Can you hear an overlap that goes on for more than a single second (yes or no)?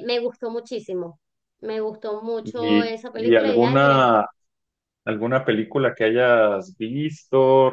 yes